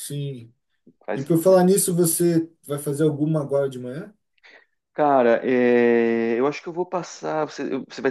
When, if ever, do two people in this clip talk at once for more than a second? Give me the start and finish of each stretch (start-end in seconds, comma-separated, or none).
none